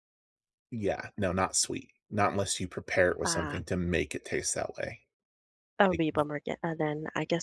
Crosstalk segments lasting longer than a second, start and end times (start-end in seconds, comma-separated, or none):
none